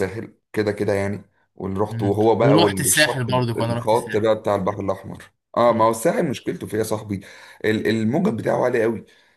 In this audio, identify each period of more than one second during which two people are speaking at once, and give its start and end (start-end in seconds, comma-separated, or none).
1.9-4.3